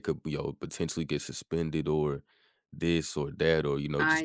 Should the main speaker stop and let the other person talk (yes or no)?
no